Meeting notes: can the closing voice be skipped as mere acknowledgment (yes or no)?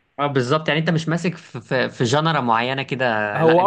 no